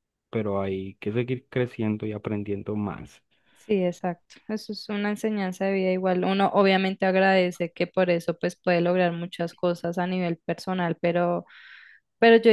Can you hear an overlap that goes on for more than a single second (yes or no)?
no